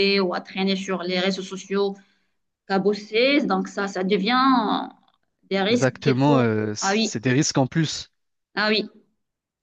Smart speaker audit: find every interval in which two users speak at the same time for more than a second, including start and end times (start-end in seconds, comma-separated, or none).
5.7-7.1